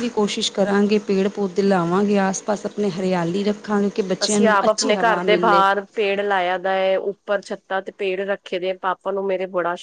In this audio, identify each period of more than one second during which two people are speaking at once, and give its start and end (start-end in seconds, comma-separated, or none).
4.2-5.6